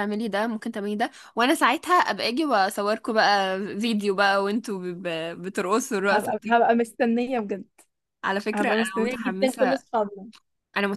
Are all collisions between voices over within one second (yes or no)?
no